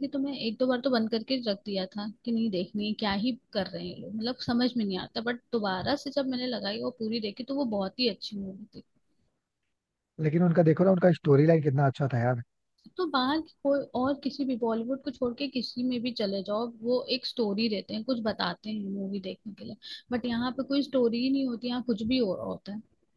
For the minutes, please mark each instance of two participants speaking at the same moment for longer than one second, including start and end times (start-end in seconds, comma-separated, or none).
none